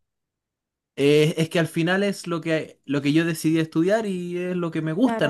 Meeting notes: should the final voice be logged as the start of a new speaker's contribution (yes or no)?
no